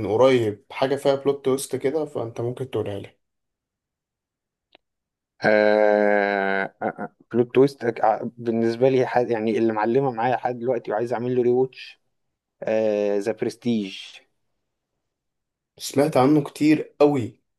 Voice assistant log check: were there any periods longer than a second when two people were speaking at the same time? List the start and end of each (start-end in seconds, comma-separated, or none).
none